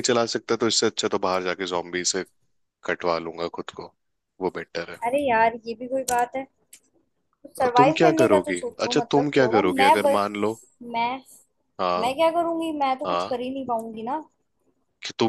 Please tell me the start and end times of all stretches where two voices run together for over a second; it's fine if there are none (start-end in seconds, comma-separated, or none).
7.8-10.2